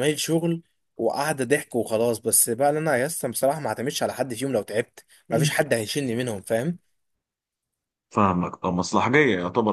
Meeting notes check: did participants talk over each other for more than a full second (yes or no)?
no